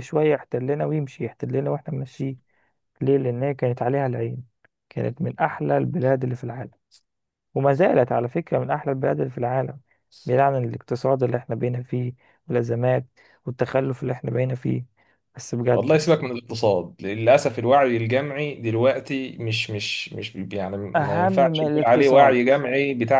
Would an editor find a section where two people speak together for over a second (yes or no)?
yes